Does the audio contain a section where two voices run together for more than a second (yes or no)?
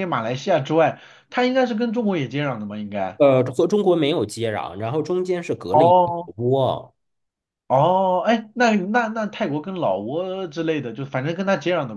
no